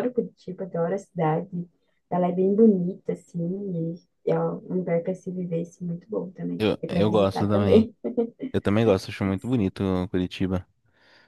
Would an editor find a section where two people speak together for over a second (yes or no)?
yes